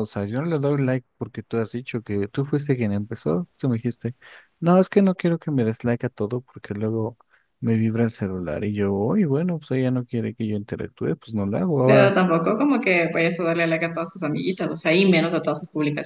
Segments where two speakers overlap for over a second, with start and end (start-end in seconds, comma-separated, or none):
none